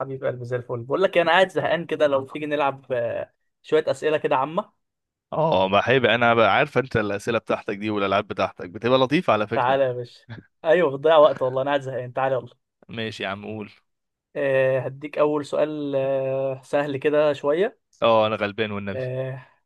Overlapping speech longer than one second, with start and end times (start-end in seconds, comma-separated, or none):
none